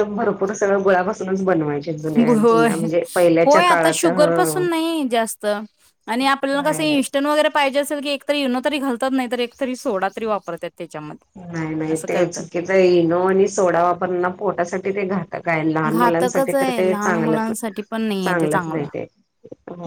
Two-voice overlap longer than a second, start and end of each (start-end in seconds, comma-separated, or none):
15.9-17.5